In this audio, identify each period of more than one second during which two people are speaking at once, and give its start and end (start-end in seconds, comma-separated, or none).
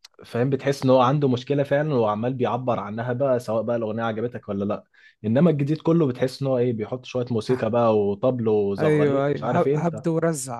8.8-10.0